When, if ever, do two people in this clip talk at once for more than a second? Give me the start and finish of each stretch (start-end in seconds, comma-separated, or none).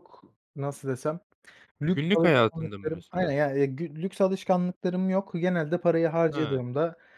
1.9-3.4